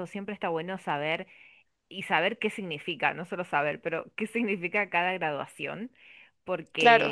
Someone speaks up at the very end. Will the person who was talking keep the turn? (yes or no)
yes